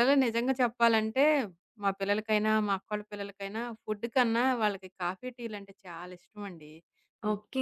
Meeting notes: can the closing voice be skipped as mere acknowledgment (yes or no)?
no